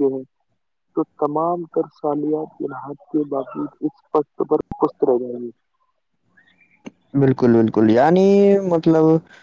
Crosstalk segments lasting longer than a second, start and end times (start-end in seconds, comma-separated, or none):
none